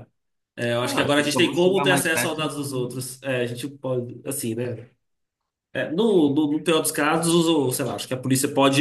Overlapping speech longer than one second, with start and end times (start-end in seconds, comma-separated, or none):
0.8-3.0